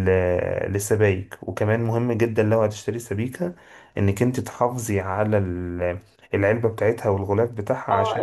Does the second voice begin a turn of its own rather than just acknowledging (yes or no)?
yes